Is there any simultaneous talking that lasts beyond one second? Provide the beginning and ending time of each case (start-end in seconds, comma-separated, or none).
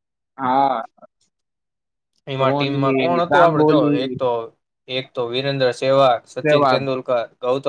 2.4-4.2